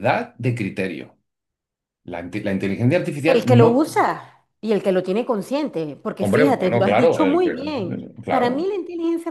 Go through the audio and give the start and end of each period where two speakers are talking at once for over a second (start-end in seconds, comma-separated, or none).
6.2-7.5